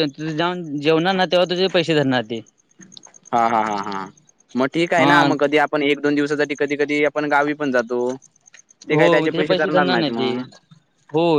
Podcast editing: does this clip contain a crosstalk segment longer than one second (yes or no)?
no